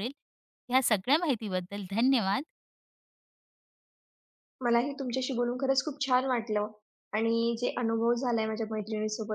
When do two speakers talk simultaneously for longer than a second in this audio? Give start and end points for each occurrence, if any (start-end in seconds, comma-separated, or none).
none